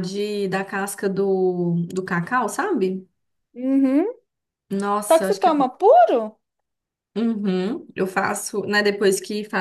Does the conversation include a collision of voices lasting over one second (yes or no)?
no